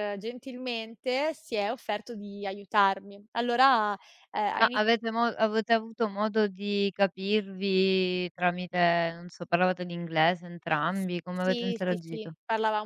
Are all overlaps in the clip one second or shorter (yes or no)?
no